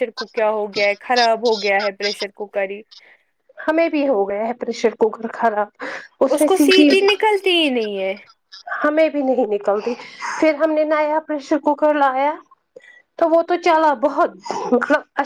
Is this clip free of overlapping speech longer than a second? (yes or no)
yes